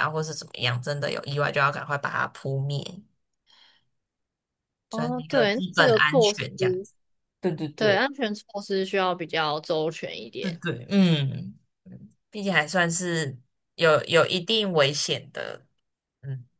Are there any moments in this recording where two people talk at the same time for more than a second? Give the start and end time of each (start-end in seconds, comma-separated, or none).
4.9-6.4